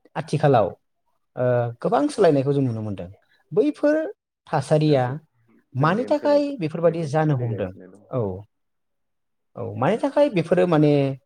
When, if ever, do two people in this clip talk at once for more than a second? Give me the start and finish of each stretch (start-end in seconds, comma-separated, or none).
5.8-7.7